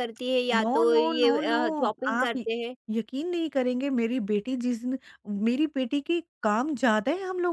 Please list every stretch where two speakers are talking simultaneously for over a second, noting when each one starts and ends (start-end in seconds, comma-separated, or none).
0.6-2.4